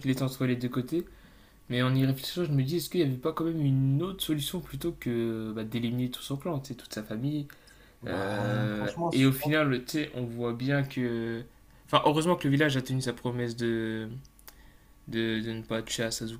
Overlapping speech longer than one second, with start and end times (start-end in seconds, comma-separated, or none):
8.1-9.6